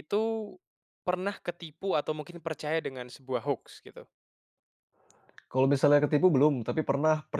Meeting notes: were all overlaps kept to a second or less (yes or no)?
yes